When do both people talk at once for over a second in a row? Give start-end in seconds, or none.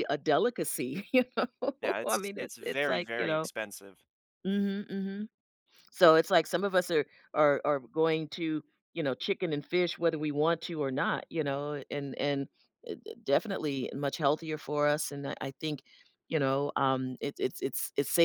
2.0-3.5